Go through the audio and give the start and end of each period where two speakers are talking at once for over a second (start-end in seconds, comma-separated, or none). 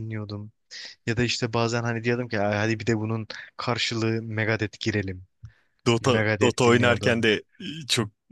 6.0-7.3